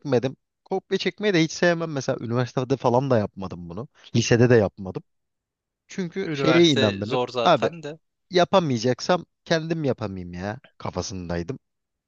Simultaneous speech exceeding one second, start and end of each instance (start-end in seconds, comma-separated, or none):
6.2-7.7